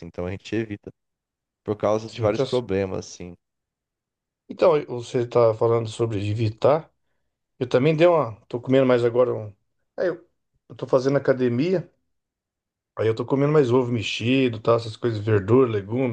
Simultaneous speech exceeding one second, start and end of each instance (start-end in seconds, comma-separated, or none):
none